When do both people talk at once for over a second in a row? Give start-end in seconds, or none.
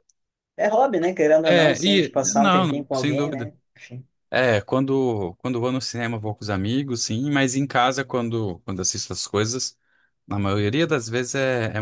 1.4-3.5